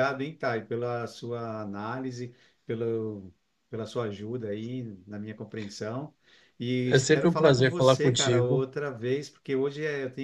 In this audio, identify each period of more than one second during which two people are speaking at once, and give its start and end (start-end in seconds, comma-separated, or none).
6.9-8.6